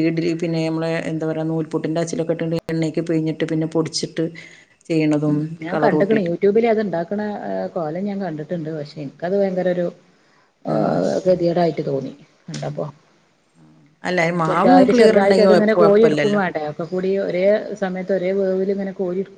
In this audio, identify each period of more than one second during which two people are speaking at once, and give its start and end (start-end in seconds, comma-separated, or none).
14.5-16.4